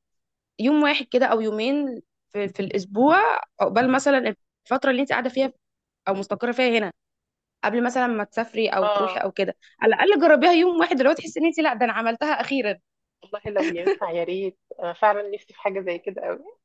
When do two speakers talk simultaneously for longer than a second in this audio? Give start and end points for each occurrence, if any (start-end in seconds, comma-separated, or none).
none